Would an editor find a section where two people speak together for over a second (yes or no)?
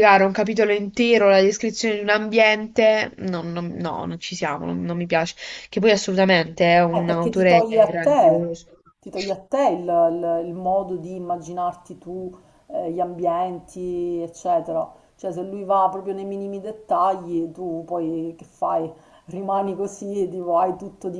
yes